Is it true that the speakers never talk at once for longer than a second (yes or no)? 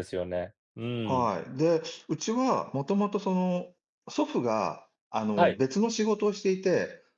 yes